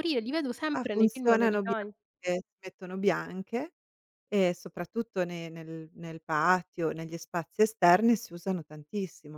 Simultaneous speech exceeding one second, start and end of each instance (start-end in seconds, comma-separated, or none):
0.7-1.9